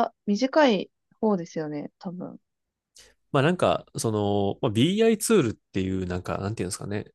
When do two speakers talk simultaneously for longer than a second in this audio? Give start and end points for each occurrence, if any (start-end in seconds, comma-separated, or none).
none